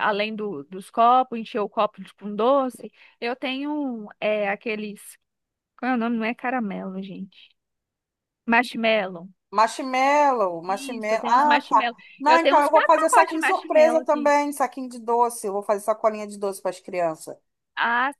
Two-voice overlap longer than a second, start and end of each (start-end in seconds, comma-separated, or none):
10.7-14.3